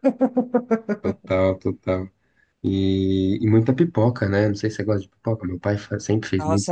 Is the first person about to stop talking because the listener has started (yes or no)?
yes